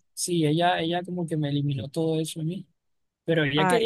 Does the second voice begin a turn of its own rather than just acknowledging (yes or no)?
no